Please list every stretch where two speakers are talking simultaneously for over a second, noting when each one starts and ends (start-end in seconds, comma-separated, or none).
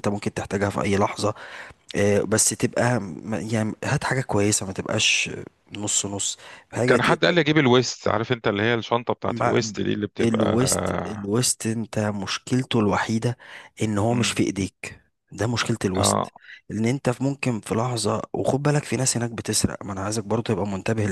none